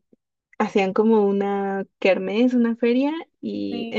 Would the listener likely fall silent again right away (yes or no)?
yes